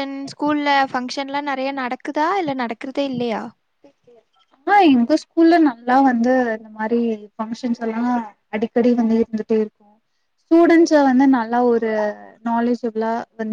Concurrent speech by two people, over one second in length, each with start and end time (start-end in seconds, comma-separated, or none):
none